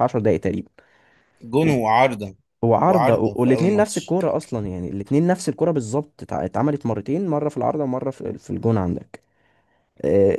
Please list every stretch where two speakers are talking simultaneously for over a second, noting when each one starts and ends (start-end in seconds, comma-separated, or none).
2.9-4.2